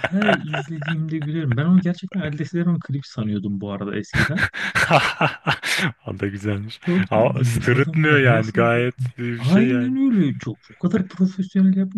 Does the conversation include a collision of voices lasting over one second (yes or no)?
yes